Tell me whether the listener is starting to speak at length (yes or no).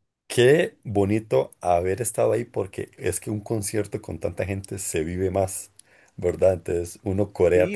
yes